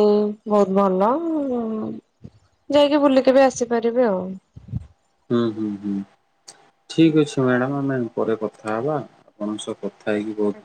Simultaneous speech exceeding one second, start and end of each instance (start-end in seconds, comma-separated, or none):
none